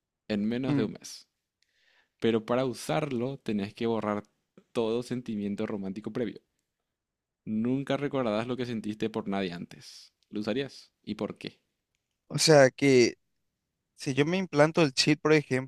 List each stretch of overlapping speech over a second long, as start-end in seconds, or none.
none